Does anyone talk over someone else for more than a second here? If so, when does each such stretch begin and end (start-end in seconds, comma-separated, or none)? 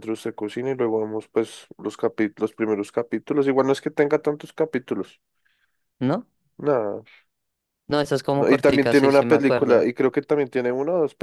8.3-9.9